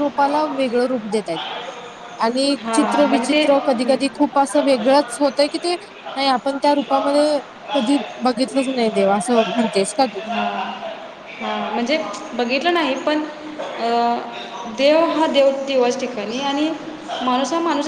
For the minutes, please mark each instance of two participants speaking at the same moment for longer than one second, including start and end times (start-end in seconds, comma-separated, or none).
2.6-4.0